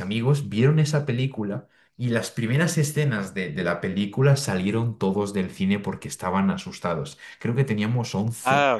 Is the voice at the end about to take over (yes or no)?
no